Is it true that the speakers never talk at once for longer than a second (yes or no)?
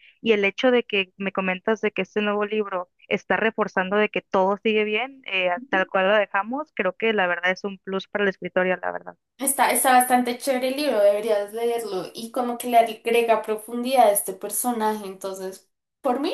yes